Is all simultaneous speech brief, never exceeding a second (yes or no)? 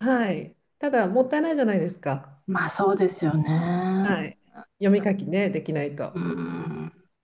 yes